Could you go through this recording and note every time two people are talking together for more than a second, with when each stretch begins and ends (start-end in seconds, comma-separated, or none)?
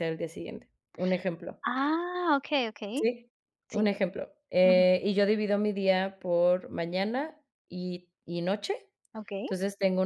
none